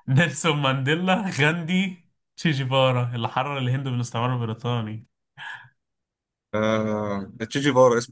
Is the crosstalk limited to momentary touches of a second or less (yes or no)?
yes